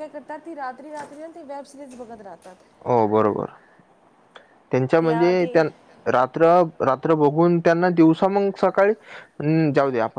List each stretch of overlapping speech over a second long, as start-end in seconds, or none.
none